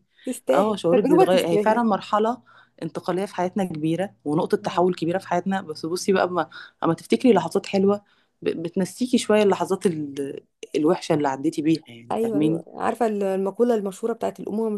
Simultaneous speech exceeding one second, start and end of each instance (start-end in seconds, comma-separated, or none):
0.5-1.8